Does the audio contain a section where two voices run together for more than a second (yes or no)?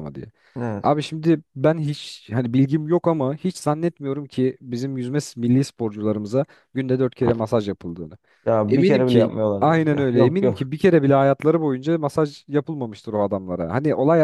yes